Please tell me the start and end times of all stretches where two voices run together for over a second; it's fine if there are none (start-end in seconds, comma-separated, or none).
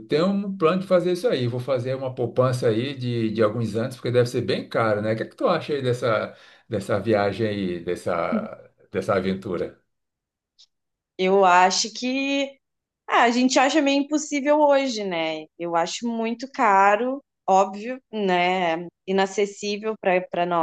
none